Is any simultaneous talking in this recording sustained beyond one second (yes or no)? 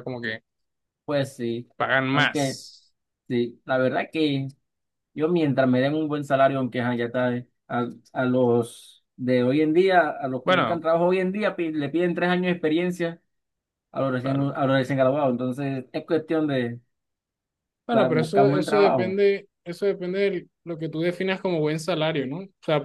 yes